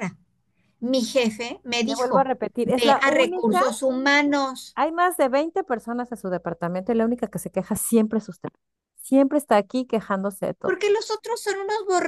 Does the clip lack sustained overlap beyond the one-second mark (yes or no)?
no